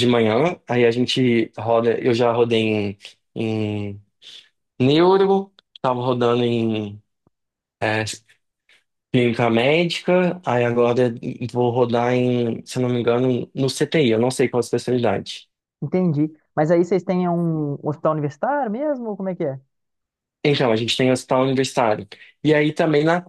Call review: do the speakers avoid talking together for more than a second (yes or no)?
yes